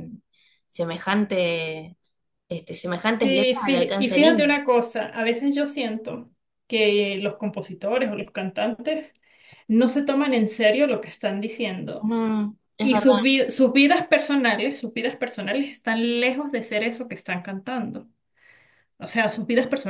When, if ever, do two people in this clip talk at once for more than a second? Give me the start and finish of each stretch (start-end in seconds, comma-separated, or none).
3.2-4.5